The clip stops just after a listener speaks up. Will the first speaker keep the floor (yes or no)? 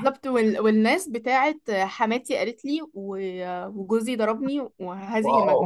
no